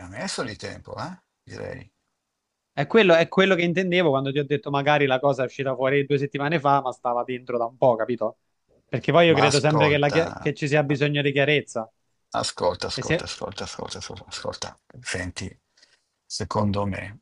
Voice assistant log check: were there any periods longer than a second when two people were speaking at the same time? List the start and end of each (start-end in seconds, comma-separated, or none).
9.3-10.5